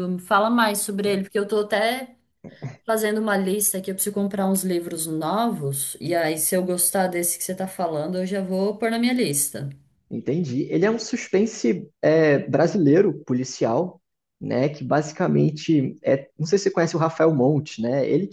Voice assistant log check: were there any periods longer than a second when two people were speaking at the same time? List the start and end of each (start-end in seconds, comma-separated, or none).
none